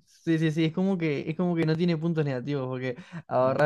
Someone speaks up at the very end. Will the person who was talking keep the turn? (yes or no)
yes